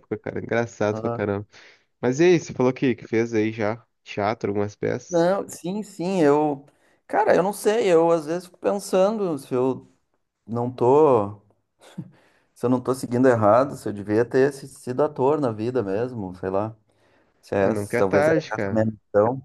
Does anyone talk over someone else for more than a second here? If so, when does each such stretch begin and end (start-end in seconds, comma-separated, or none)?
17.6-18.9